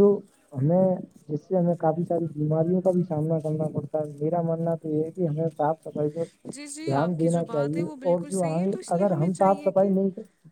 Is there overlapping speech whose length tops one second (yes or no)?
yes